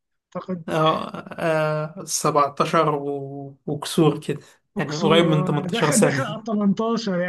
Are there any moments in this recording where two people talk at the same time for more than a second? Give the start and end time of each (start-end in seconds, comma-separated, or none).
4.8-6.4